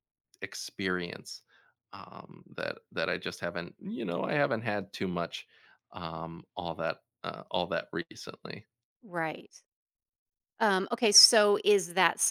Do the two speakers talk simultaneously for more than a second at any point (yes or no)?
no